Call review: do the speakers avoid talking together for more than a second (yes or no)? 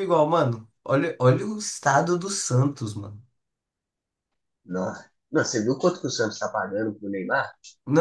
yes